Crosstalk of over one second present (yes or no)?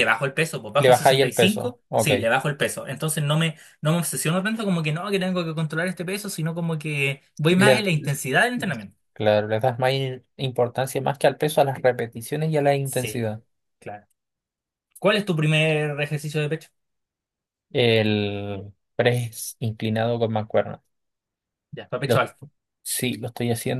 yes